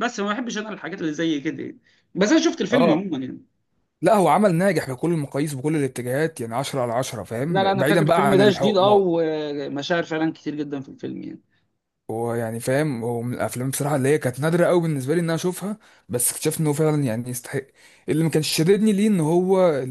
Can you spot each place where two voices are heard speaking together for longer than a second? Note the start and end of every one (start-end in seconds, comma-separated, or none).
7.5-8.9